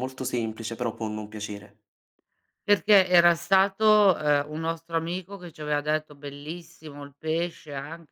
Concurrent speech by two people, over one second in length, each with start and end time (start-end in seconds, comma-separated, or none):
none